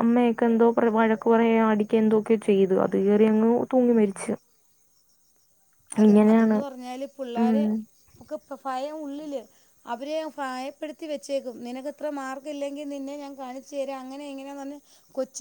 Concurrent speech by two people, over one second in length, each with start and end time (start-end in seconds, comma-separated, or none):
none